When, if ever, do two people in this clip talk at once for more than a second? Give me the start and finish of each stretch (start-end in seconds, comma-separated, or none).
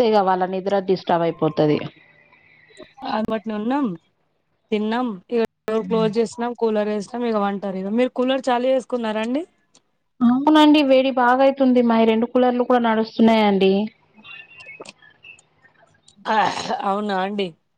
none